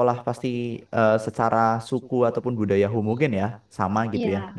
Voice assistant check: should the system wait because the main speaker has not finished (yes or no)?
yes